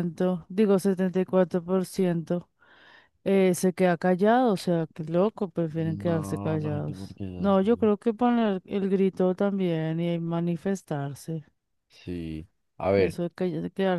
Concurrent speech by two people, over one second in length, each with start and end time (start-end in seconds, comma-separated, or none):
6.0-7.9